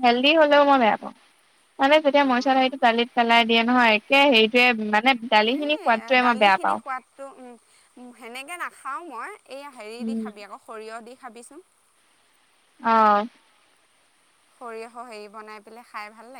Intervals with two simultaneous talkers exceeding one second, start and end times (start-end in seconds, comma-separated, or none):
none